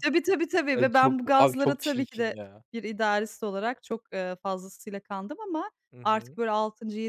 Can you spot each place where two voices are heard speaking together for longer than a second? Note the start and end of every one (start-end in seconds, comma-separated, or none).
0.7-2.4